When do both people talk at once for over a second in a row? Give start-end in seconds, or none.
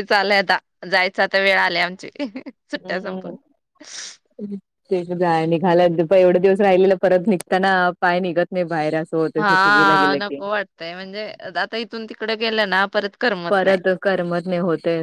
none